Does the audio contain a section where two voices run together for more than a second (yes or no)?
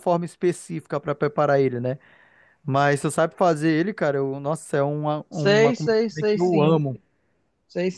yes